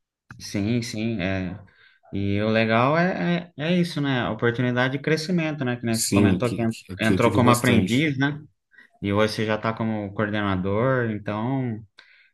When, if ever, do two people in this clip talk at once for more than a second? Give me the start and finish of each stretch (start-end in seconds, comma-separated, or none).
5.9-8.1